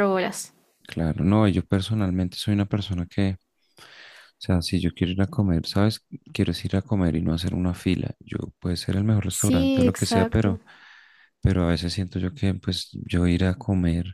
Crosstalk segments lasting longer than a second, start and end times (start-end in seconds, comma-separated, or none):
9.3-10.6